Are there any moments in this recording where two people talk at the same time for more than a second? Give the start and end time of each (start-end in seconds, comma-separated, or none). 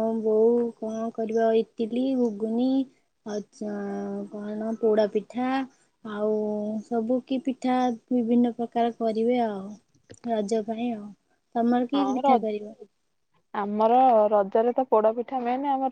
none